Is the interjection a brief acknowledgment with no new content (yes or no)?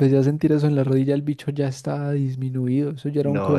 no